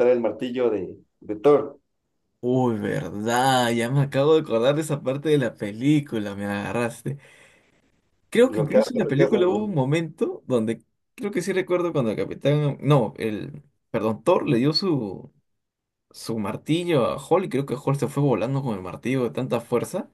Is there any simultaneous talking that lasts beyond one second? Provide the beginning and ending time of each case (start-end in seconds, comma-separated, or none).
8.5-9.7